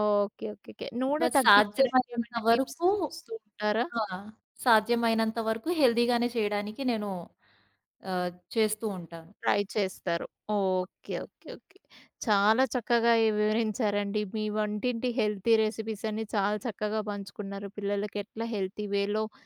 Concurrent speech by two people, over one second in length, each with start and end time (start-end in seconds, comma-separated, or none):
1.2-2.9